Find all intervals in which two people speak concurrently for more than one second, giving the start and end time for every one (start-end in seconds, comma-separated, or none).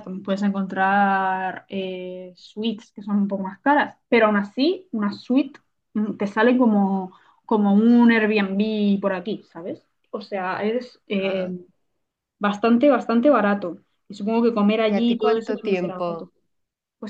14.9-16.3